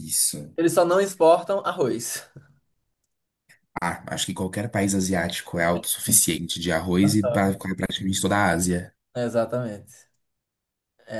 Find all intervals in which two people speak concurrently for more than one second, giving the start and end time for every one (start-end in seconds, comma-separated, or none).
none